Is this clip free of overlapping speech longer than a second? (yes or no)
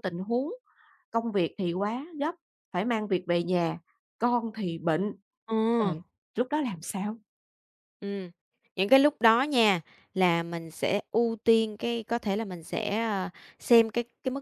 yes